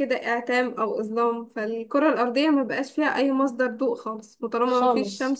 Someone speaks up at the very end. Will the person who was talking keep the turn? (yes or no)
yes